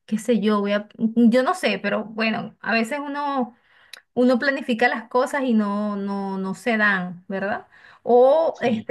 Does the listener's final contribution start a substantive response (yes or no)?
no